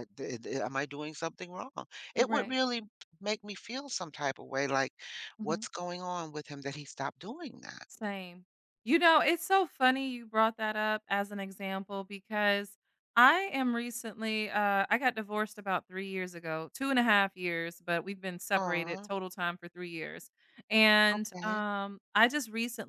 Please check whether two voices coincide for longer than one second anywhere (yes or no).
no